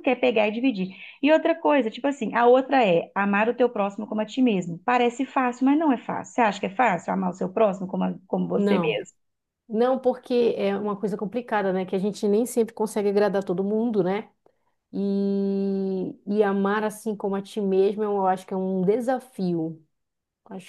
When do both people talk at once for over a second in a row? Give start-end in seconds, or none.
none